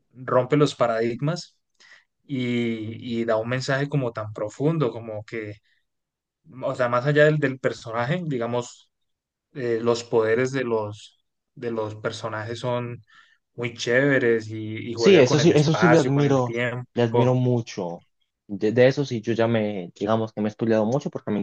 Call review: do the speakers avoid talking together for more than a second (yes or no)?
no